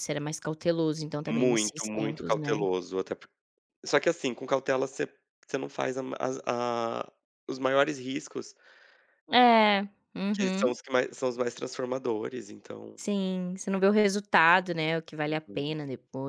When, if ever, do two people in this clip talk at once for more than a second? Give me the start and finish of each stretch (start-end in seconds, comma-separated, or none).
1.3-2.6